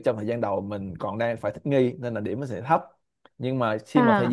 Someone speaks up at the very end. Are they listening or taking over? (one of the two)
listening